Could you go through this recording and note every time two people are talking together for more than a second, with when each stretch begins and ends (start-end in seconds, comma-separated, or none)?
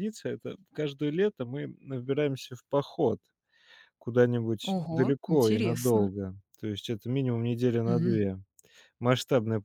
4.6-6.1